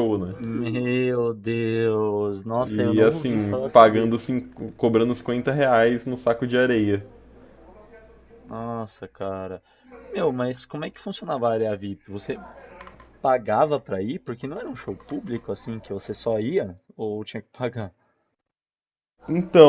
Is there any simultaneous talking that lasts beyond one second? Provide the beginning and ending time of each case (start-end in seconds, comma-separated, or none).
2.7-4.1